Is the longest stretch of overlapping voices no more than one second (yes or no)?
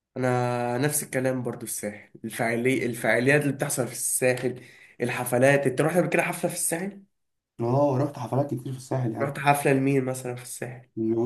yes